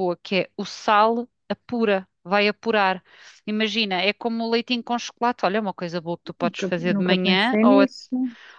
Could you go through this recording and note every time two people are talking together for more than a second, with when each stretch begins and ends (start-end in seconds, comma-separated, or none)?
6.4-7.9